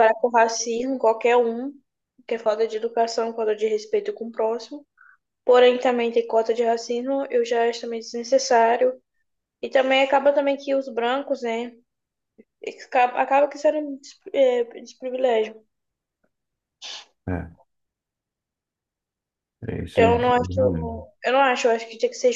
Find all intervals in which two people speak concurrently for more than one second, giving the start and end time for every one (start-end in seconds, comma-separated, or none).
19.9-21.1